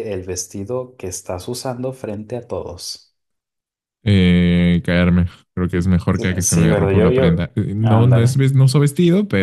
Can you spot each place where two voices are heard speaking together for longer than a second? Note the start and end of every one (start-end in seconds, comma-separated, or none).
6.1-8.4